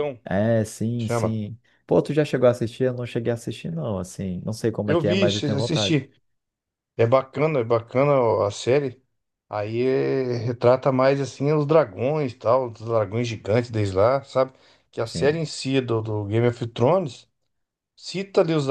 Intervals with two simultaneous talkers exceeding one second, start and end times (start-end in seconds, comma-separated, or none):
4.8-6.1